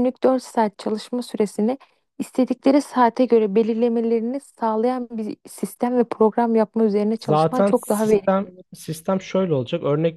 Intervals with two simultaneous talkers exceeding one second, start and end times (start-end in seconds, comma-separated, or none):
7.2-8.5